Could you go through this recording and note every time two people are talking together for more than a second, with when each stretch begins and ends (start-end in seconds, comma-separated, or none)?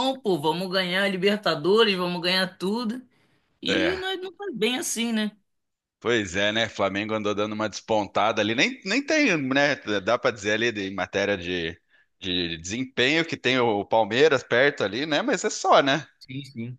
none